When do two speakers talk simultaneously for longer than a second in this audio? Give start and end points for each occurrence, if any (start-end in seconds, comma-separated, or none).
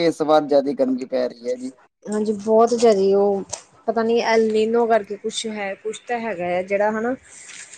none